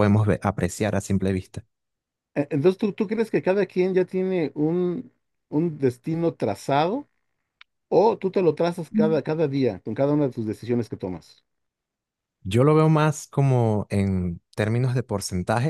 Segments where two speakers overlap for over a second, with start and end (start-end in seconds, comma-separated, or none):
none